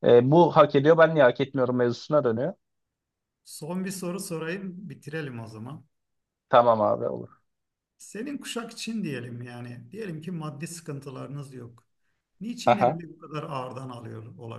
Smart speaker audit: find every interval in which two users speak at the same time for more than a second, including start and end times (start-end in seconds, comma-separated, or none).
none